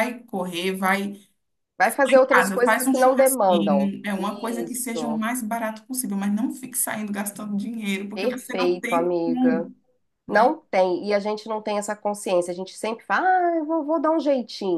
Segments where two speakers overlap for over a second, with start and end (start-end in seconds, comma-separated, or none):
1.8-3.9, 8.1-9.7